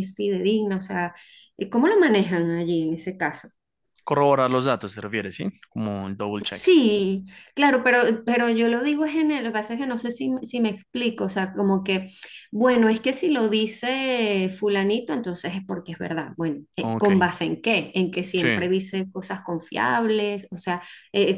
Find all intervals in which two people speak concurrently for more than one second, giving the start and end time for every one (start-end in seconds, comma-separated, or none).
none